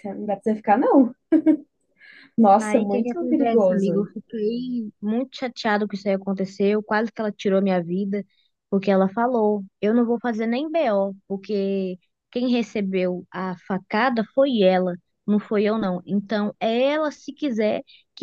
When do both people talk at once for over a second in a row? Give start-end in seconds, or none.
2.6-4.1